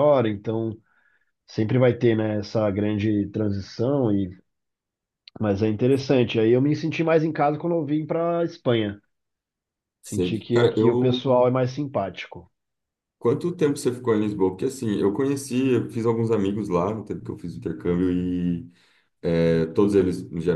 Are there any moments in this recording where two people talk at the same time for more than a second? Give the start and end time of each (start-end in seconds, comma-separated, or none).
10.0-11.2